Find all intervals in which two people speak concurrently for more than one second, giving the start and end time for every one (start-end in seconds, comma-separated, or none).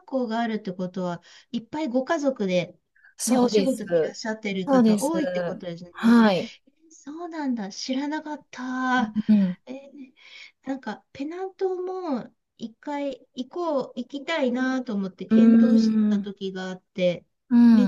none